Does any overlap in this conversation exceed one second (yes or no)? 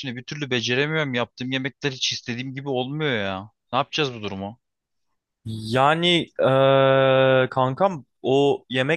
no